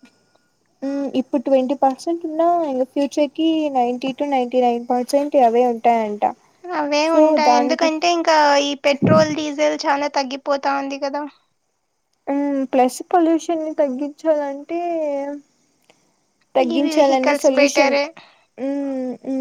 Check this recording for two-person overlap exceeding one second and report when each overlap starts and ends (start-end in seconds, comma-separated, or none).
16.6-17.9